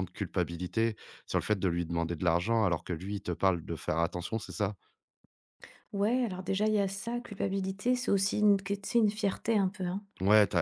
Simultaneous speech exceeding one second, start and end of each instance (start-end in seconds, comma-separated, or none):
none